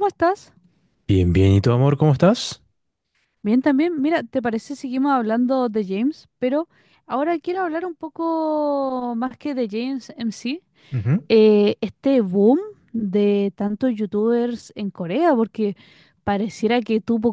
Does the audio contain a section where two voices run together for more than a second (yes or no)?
no